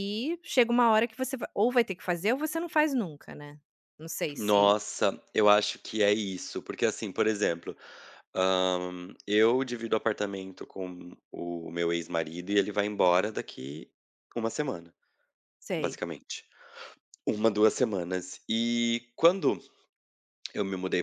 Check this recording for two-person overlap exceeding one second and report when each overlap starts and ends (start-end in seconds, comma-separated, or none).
none